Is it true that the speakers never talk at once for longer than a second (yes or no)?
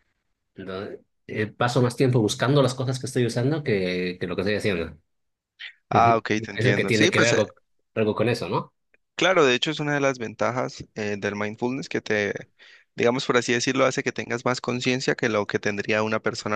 no